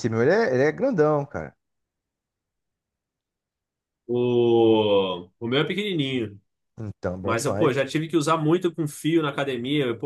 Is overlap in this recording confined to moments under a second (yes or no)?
yes